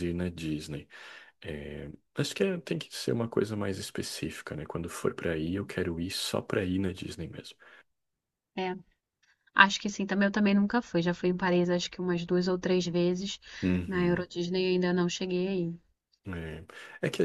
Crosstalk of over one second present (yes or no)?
no